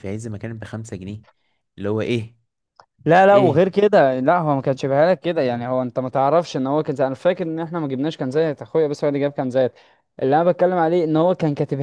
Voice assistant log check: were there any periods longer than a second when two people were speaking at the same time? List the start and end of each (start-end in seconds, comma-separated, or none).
none